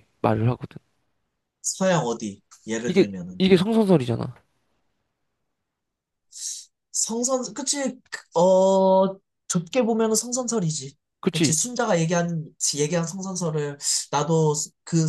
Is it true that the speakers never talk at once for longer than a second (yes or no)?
yes